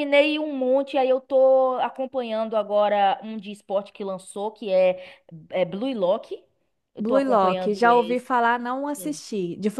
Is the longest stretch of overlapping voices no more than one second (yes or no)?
no